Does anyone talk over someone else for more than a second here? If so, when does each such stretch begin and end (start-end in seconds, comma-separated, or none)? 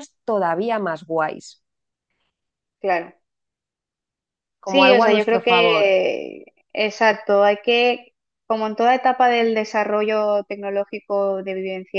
4.6-5.9